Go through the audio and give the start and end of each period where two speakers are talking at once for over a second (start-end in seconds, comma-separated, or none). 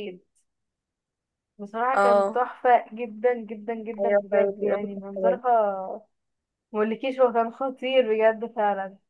4.0-5.4